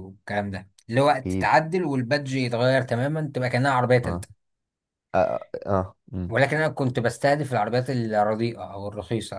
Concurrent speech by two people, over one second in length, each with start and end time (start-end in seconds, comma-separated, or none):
none